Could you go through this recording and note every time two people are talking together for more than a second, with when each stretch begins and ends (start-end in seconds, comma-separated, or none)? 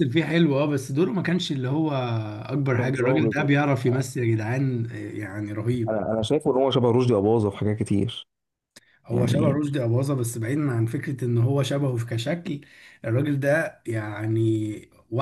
2.8-4.0